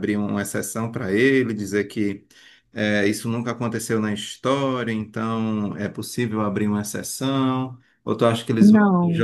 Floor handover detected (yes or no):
no